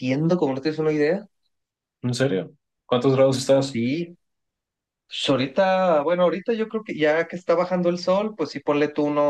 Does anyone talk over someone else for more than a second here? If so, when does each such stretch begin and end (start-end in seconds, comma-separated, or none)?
none